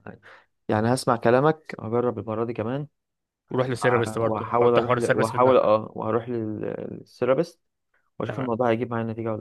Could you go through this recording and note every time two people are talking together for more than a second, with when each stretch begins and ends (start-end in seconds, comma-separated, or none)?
4.2-5.6